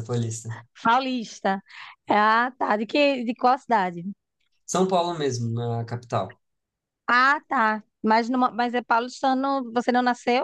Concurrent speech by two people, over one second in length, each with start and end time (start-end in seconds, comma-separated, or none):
none